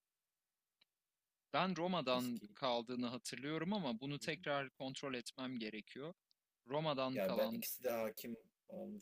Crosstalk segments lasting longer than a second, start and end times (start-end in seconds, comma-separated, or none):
none